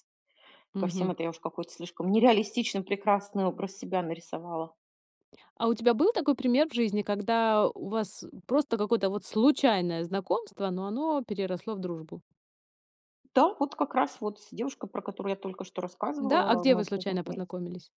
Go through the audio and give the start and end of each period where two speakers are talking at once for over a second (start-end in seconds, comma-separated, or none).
16.2-17.4